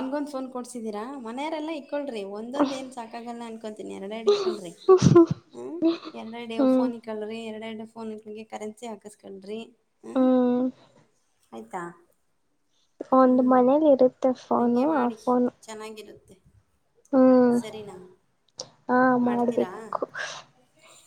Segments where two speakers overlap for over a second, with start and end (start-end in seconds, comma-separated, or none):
none